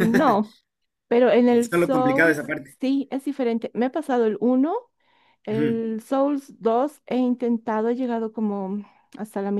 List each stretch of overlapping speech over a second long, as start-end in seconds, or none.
1.5-2.8